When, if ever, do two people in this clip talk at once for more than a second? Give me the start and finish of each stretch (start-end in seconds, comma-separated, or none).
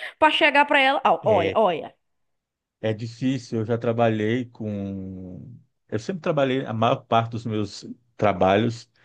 none